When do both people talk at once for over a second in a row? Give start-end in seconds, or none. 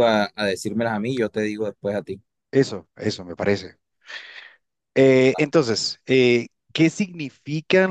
none